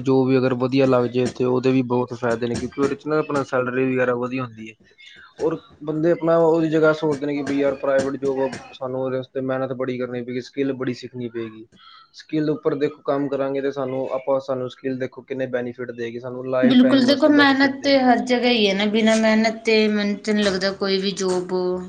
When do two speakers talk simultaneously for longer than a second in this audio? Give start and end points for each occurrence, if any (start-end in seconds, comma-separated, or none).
16.6-18.0